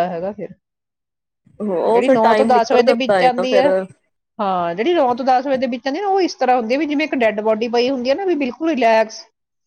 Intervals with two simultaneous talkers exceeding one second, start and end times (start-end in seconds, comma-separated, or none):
1.9-3.7